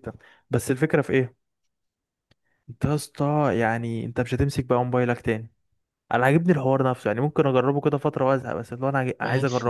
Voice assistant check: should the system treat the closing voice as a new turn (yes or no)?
yes